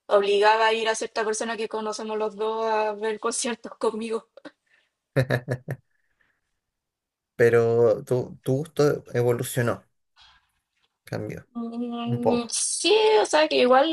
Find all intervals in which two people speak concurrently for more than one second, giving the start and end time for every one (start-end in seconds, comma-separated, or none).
none